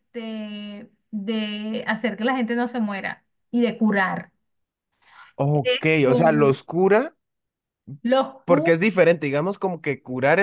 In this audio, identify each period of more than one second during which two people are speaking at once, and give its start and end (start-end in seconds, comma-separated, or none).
none